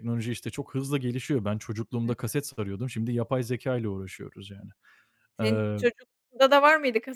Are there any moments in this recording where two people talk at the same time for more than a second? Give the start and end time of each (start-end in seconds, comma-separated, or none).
none